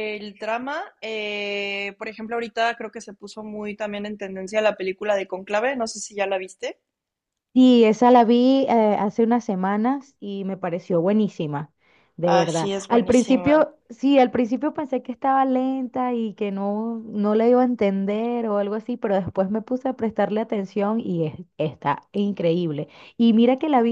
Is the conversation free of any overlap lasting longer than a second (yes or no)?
no